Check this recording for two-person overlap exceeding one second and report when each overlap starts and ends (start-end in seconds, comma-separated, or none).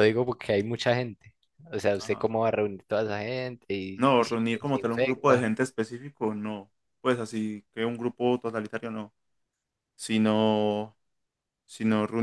4.0-5.5